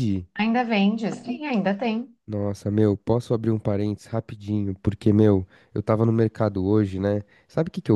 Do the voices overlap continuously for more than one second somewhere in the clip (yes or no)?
no